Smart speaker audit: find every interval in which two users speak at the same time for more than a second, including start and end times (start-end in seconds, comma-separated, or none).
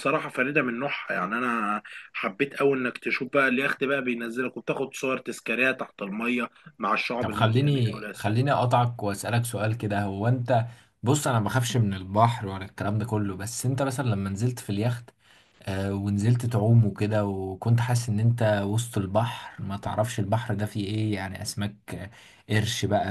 7.2-8.6